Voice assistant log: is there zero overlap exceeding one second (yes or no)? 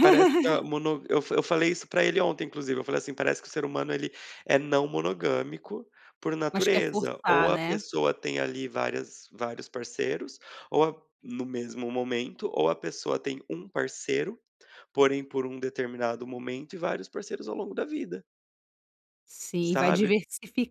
no